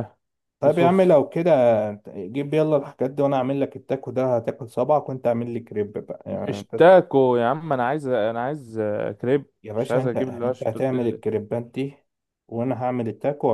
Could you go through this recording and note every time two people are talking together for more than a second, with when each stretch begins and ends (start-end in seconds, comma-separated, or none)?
9.6-11.2